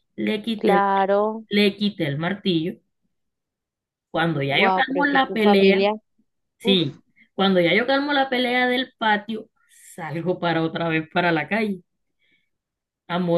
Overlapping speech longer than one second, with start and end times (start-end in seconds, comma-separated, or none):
4.5-5.9